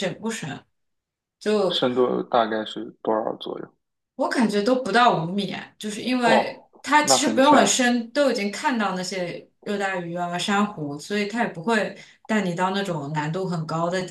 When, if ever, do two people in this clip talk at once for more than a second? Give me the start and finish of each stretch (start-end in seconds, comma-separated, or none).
6.2-7.7